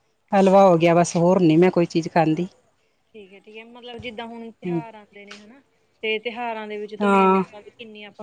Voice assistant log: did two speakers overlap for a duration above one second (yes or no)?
no